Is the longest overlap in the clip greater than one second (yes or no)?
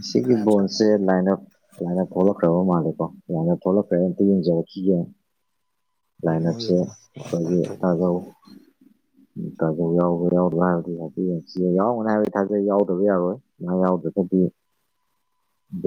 yes